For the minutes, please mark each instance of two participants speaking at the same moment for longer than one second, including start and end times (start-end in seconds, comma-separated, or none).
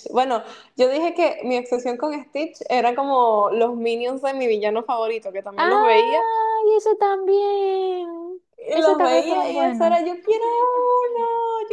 8.6-10.0